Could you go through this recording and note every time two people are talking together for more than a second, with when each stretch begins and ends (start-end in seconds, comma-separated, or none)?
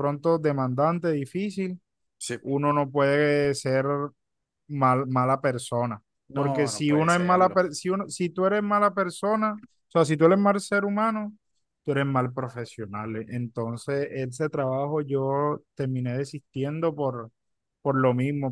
6.3-7.6